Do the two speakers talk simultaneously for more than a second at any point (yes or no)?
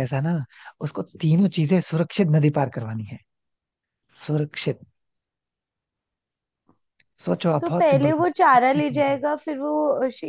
yes